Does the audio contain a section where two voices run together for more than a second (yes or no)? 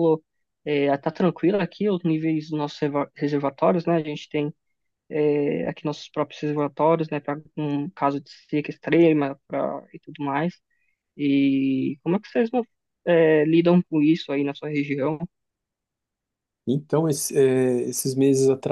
no